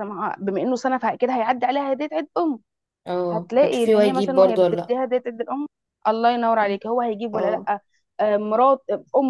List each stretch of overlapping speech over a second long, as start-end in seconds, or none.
3.3-5.0